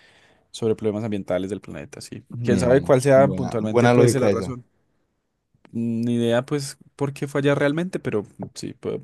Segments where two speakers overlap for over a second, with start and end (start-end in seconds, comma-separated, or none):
2.3-4.5